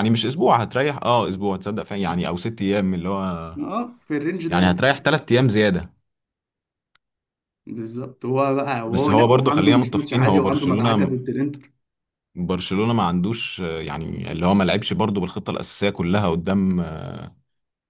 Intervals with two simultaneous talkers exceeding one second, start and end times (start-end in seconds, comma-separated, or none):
8.9-11.1